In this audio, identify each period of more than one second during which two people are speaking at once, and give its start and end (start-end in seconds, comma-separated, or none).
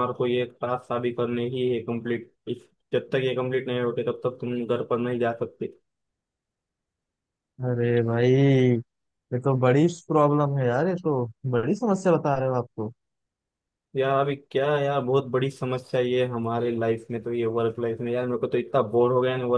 none